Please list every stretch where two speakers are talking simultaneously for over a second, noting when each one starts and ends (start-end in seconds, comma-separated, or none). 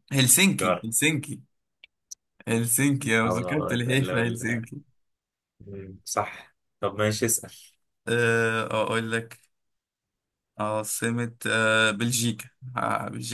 3.2-4.7